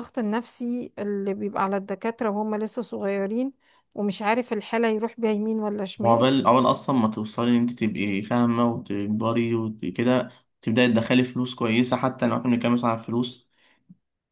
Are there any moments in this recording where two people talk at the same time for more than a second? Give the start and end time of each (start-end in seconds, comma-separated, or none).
none